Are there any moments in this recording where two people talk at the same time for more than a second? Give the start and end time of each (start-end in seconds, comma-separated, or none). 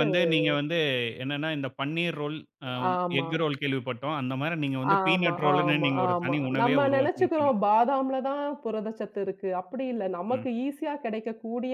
5.0-7.5